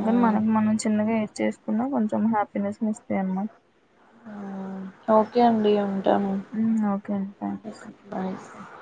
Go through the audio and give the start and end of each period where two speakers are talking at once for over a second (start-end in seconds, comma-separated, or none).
none